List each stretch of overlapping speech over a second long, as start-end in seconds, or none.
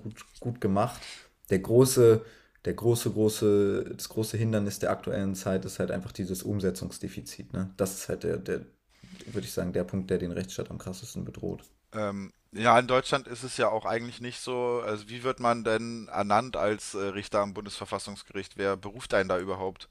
none